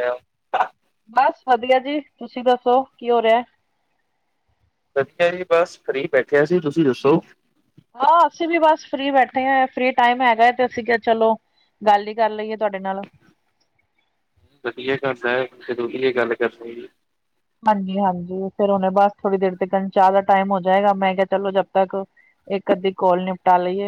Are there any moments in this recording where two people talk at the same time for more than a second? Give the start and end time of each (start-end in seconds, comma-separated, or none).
none